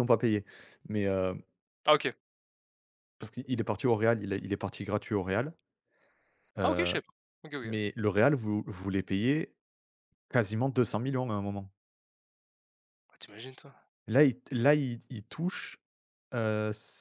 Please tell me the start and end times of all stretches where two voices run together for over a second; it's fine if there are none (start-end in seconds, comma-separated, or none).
none